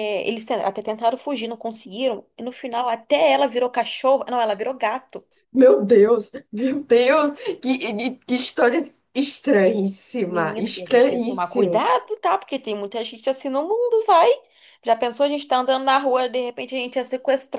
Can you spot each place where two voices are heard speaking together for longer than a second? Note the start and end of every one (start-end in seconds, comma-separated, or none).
10.2-11.8